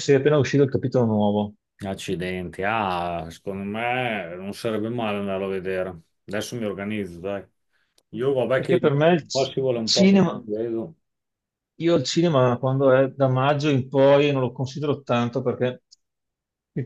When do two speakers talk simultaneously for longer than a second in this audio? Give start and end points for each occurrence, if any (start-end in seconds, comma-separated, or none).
8.6-10.4